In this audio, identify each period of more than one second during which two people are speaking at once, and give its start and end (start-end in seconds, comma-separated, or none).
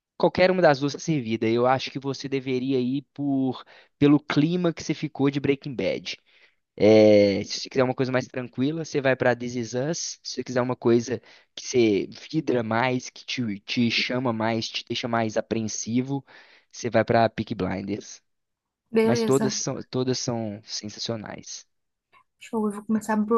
none